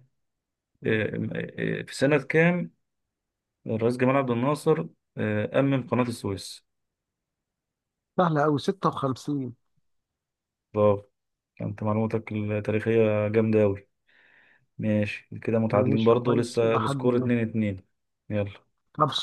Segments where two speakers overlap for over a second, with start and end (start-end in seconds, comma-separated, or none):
15.7-17.3